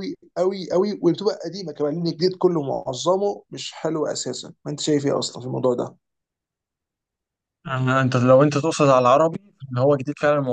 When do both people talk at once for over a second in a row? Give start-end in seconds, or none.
none